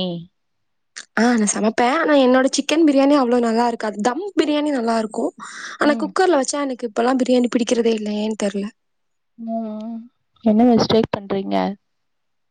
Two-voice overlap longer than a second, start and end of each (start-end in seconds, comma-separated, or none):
none